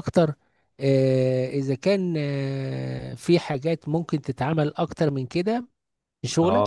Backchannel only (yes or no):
no